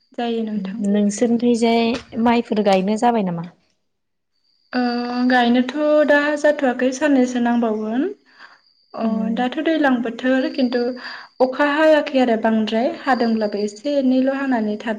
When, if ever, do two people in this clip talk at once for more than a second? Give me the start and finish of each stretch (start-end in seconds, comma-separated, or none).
none